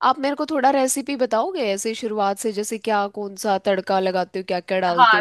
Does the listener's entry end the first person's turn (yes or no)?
yes